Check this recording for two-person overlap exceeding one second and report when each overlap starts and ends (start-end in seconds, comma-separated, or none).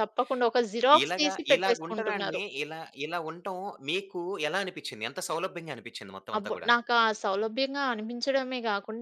1.0-2.4